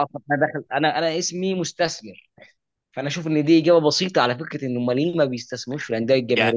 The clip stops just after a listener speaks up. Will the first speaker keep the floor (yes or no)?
no